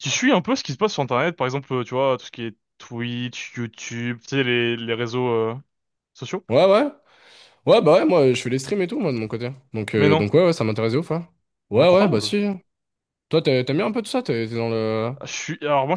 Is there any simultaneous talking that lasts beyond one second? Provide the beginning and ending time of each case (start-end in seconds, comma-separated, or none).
none